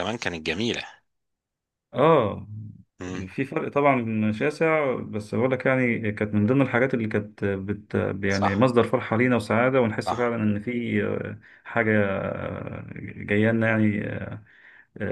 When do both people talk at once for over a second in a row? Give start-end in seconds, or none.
none